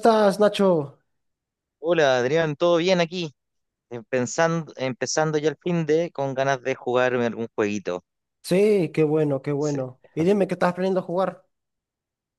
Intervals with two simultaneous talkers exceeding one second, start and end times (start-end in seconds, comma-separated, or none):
none